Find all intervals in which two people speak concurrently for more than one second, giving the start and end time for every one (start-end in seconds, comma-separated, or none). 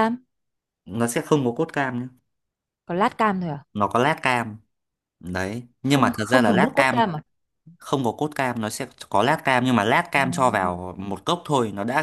5.9-7.1